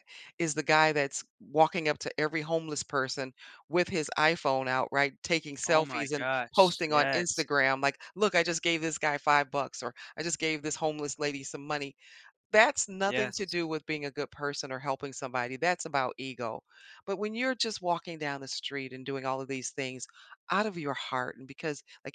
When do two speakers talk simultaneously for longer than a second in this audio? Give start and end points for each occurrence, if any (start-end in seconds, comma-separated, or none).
5.7-7.5